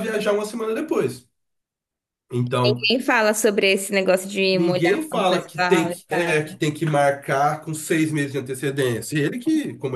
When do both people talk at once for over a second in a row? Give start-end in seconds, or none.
4.5-6.3